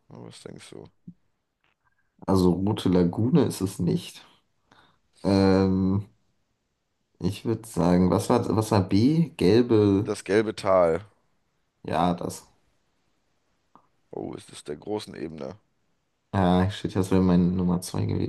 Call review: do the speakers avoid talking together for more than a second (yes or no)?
yes